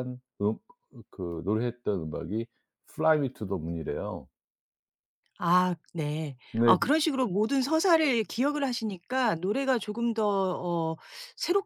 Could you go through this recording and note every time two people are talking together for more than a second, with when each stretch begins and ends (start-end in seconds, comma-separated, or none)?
none